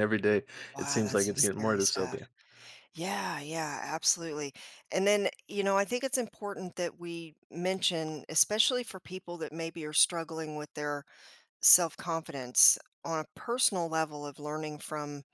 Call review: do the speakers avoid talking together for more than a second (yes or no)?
no